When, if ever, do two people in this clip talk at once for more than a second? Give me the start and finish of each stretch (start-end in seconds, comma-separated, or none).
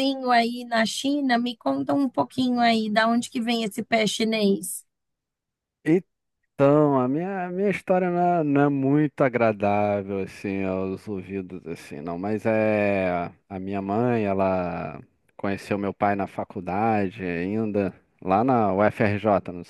none